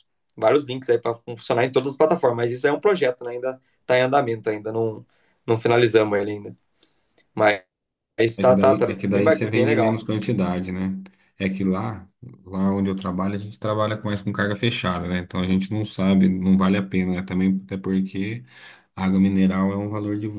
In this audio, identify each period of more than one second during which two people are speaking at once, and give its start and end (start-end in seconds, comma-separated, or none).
8.4-10.0